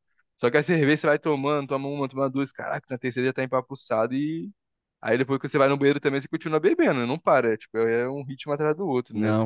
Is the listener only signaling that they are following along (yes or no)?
no